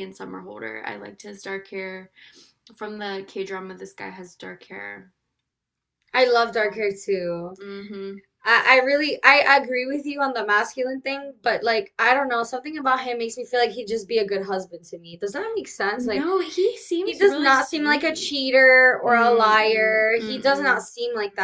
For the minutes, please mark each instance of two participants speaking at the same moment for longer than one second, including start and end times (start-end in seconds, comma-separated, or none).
17.0-18.4, 19.1-20.8